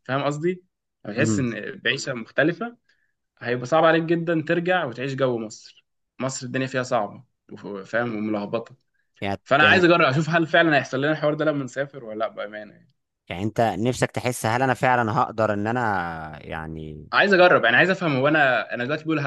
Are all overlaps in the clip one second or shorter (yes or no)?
yes